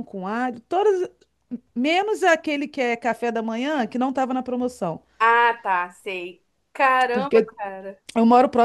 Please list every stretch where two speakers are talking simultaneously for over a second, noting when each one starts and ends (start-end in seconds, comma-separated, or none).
none